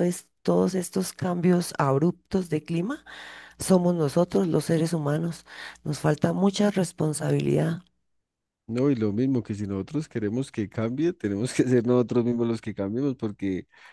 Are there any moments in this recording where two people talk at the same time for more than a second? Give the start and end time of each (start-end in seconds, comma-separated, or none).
none